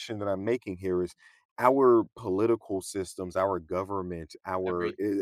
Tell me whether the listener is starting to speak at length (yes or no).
no